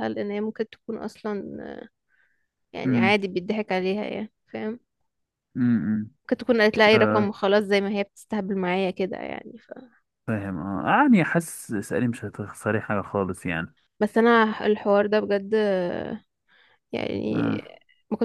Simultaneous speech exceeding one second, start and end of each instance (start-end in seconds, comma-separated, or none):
none